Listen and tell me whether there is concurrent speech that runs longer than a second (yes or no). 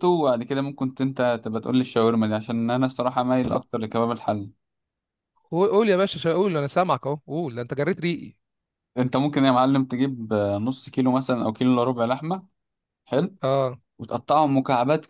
no